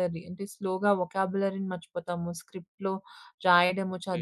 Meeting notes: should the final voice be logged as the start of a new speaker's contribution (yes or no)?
no